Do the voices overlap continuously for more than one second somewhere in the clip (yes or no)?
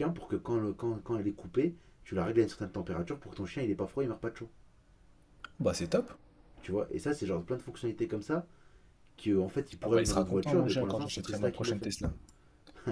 yes